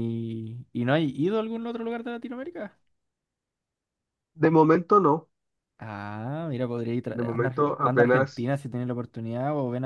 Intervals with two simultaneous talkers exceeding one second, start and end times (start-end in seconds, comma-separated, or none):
7.1-8.5